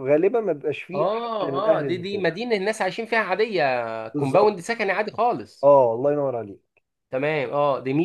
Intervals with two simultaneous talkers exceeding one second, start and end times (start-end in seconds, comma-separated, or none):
0.9-2.2